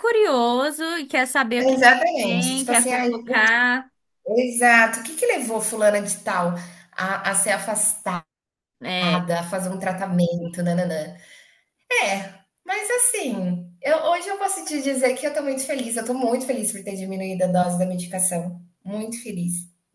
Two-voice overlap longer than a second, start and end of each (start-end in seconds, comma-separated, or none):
1.6-3.1